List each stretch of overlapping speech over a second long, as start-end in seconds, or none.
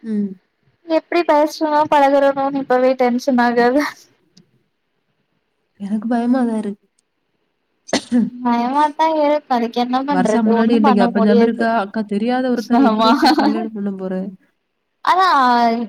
10.2-11.6